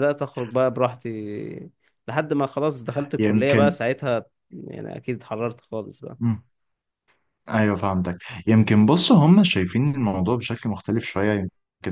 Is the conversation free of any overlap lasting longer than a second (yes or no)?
yes